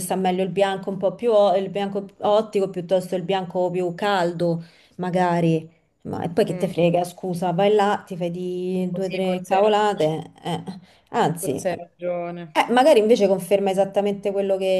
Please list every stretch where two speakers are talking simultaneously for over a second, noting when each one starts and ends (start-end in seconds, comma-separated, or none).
8.9-10.2